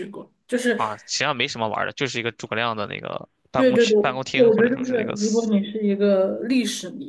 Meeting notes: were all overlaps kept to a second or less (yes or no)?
no